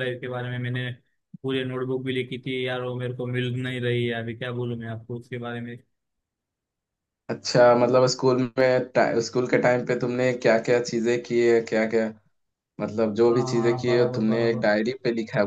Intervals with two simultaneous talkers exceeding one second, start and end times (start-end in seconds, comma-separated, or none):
13.3-14.7